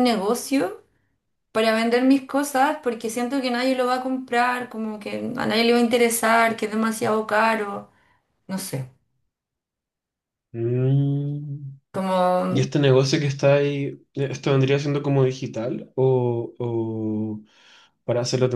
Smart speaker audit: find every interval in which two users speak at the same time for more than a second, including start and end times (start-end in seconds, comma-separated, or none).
none